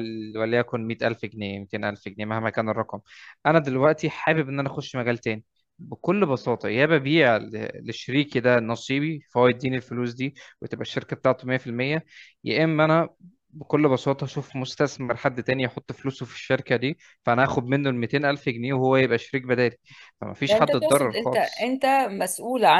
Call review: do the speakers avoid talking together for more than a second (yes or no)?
no